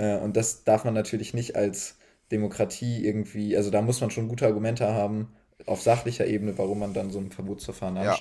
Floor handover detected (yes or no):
no